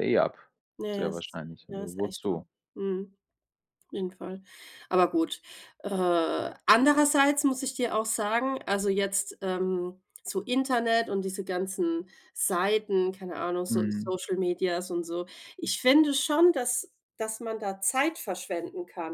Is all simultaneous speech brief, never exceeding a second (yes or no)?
no